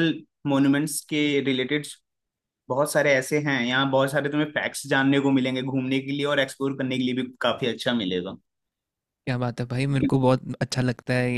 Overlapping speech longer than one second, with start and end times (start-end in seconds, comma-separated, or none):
none